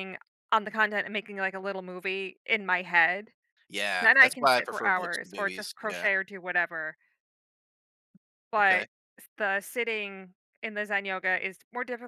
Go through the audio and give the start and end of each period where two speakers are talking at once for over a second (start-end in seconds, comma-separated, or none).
4.0-6.1